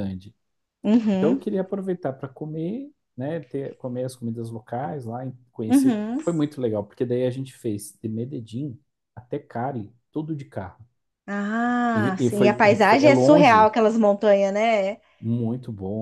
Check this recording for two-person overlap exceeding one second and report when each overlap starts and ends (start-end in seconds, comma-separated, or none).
11.9-13.7